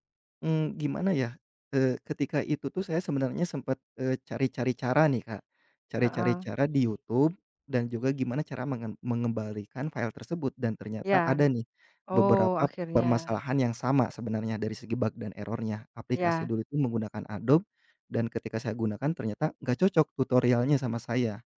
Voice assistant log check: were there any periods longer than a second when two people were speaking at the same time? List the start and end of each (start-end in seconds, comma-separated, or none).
12.1-13.4